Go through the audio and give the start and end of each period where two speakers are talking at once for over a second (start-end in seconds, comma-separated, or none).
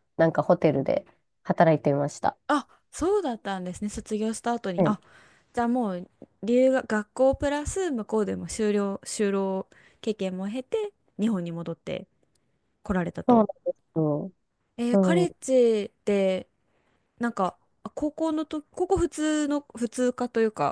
none